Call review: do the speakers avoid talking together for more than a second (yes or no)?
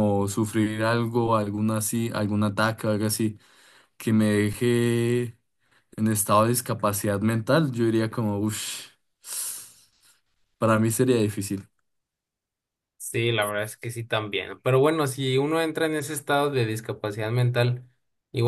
yes